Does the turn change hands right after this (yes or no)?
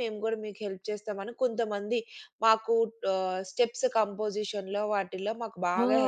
yes